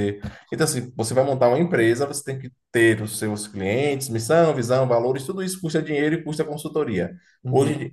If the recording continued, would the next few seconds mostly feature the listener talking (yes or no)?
no